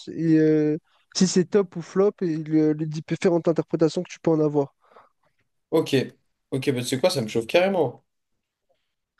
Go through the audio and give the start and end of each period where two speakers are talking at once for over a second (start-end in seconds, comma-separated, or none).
none